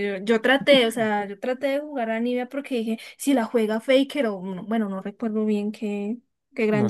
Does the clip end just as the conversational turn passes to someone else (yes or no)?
yes